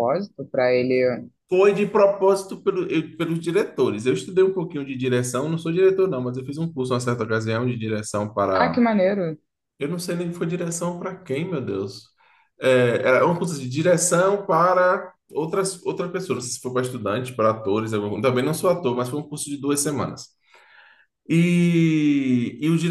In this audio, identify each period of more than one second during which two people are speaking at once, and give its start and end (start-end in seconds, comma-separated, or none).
none